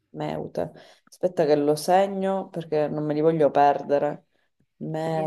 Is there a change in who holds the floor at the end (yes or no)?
yes